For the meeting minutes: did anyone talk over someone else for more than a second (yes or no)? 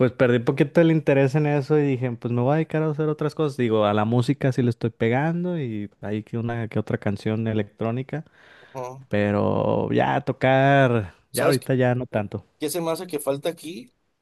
no